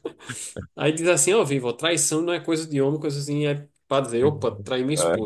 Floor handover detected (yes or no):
no